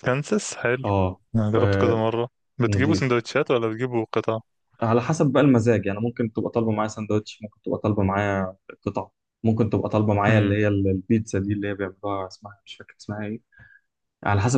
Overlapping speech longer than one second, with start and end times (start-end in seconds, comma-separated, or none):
none